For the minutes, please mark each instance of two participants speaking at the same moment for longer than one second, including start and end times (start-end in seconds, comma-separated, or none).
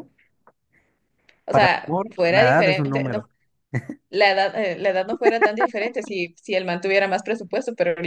1.5-3.2